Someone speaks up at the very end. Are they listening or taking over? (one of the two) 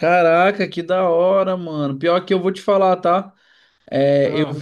listening